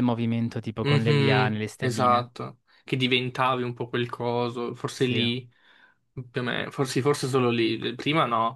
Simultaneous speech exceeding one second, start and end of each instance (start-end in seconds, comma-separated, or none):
0.8-2.3